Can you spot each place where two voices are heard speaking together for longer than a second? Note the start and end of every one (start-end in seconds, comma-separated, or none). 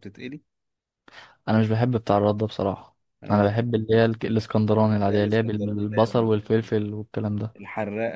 5.0-6.3